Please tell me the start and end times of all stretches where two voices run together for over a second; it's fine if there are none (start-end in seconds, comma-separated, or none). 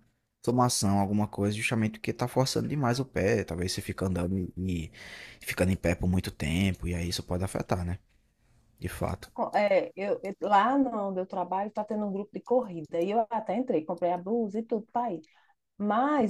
none